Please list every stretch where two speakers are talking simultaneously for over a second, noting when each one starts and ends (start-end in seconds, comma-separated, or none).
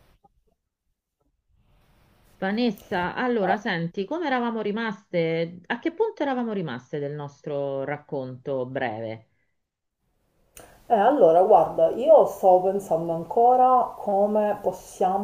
none